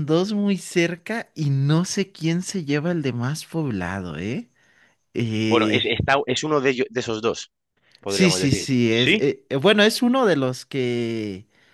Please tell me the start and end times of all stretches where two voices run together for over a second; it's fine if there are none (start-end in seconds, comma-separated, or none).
8.1-9.2